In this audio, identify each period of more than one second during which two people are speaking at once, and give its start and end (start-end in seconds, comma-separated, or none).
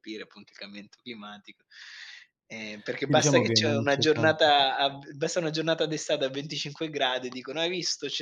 3.0-4.6